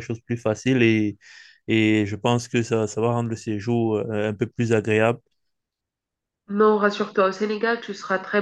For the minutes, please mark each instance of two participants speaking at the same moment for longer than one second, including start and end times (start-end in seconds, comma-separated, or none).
none